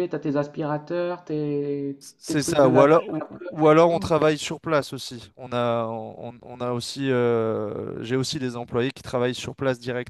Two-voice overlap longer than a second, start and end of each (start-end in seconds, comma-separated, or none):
2.2-4.1